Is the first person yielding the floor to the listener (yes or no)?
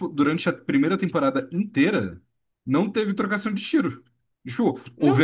no